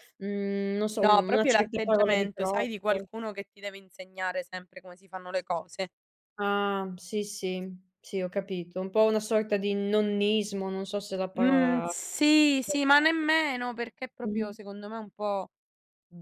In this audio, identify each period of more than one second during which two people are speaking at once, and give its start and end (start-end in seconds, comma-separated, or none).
1.0-3.1